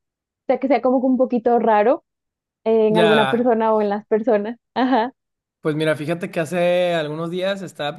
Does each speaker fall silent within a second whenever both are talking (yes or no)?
yes